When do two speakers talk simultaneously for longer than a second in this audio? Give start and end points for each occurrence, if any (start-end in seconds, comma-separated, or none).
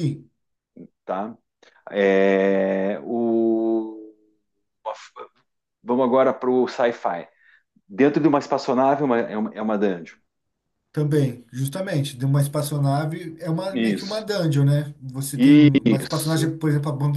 15.3-16.6